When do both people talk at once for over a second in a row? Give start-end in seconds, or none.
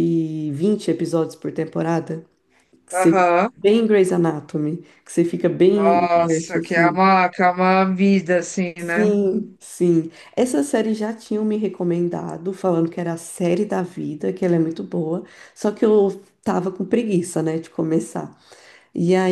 5.7-7.1